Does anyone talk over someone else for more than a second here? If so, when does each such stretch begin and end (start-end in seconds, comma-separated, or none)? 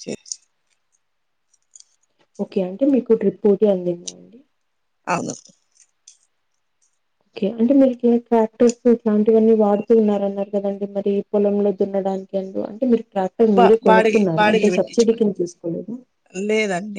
13.6-15.2